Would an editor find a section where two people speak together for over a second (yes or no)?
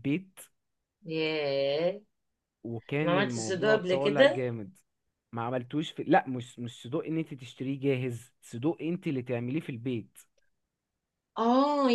yes